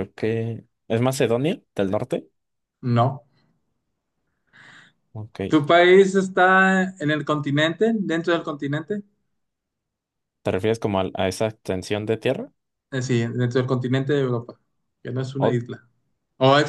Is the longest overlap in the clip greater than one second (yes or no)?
no